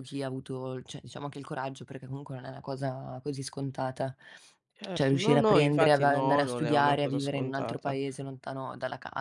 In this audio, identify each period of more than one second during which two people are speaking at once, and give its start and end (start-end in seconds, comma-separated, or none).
4.9-8.0